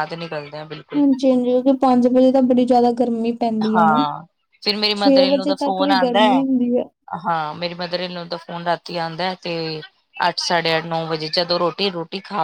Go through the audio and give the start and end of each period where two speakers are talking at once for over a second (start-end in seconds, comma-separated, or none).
5.0-6.4